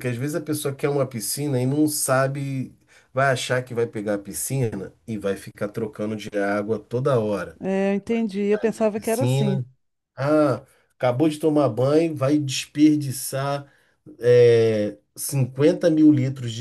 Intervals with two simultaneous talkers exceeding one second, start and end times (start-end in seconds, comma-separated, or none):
8.3-9.6